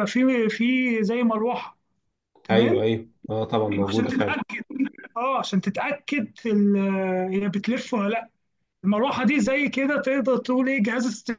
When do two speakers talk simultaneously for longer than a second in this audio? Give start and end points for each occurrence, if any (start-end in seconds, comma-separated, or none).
none